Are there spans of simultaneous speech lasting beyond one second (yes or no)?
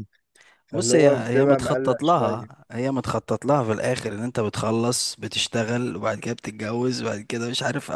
yes